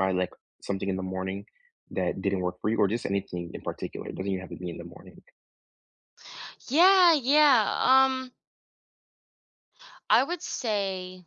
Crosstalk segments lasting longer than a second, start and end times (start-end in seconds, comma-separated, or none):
none